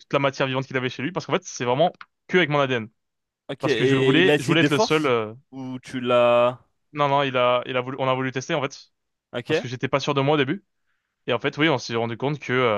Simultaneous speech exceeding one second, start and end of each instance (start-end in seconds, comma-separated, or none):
3.6-5.1